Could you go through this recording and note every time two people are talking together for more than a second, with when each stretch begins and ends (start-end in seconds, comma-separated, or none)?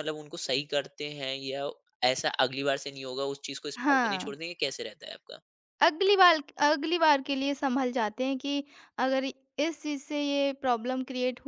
none